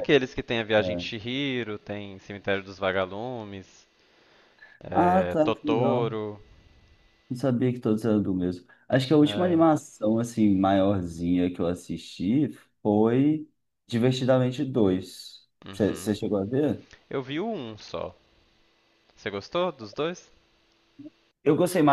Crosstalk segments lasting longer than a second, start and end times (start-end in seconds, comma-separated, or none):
4.9-6.1